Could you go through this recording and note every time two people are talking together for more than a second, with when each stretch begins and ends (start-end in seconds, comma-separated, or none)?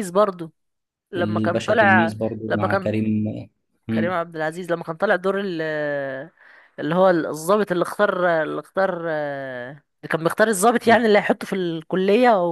1.2-2.9